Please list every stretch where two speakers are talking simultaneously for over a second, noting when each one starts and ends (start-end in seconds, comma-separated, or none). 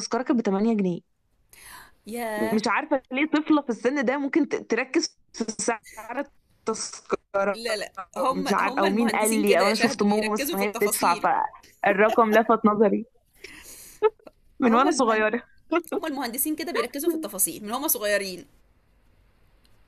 8.3-11.2